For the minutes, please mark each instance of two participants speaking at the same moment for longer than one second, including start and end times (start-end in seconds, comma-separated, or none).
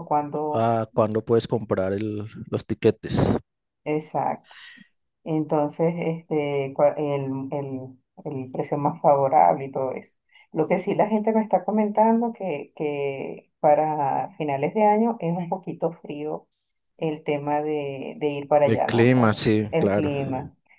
18.6-20.1